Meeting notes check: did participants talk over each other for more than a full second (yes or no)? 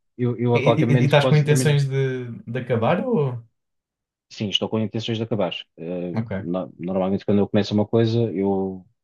yes